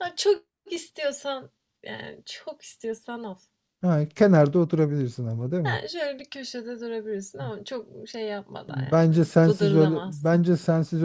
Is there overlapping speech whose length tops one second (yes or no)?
yes